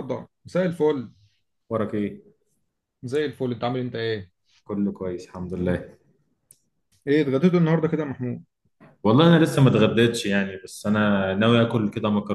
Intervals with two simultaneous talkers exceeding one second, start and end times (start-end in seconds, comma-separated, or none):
none